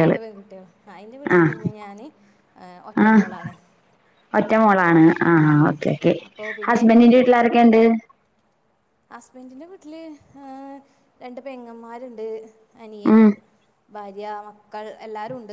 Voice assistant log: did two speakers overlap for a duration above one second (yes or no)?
no